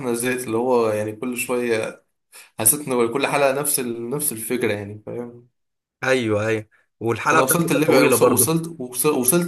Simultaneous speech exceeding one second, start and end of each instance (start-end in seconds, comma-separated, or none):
7.3-8.6